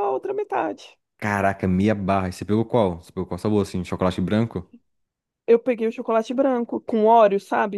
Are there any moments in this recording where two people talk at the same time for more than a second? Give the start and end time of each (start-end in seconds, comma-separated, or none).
none